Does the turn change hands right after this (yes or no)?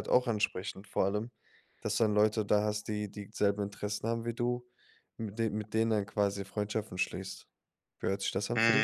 yes